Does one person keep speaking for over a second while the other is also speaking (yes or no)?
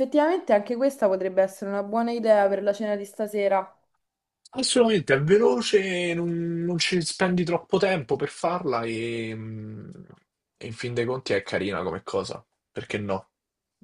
no